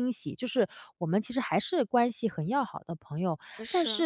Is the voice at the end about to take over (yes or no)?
no